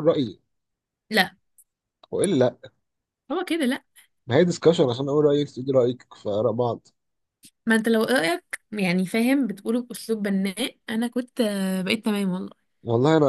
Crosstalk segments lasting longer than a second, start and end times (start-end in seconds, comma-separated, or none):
none